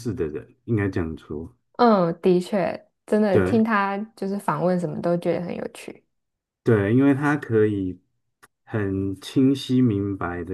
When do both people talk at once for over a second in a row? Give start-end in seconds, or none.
none